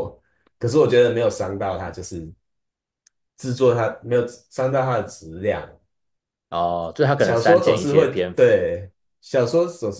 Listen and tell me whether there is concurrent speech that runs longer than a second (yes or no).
yes